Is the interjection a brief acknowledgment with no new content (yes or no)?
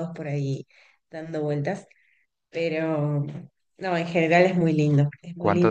no